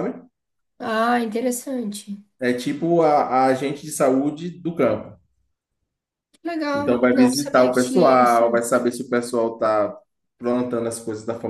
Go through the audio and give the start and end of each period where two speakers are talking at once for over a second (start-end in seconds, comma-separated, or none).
6.7-8.4